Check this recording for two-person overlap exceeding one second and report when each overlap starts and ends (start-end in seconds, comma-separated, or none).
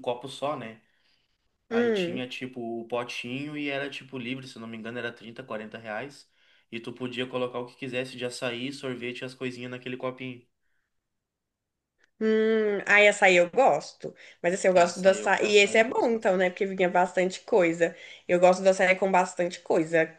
14.7-16.5